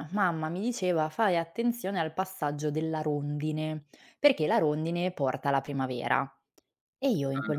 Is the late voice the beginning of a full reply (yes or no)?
no